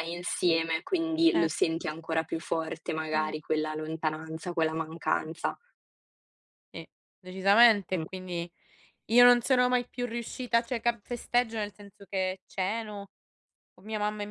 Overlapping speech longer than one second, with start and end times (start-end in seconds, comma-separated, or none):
none